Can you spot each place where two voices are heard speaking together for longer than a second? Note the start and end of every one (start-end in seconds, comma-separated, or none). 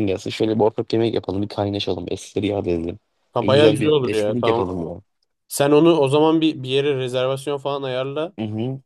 3.4-4.7